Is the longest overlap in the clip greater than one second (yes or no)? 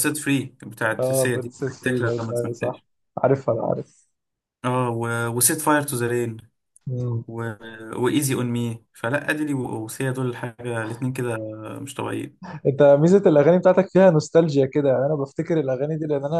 yes